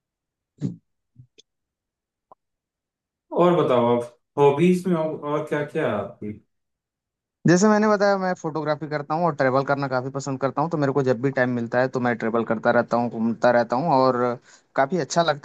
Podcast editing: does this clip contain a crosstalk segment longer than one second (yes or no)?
no